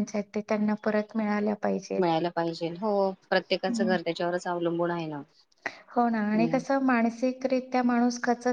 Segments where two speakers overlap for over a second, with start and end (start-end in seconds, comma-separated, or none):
none